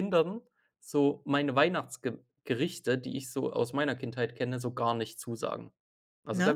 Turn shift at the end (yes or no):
no